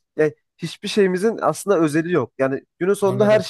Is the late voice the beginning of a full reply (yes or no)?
no